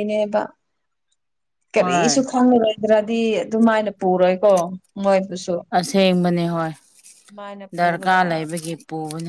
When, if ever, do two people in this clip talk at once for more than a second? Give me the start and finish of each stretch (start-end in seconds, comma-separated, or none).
none